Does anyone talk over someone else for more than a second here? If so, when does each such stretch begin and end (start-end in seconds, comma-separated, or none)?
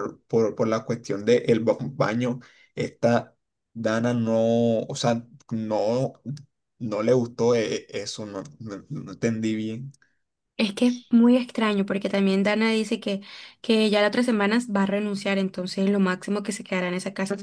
none